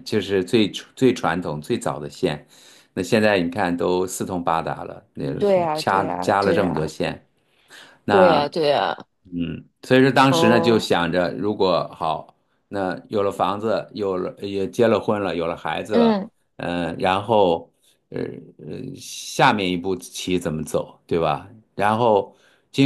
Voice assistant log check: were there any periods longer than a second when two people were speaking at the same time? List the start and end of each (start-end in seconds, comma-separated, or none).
5.4-6.9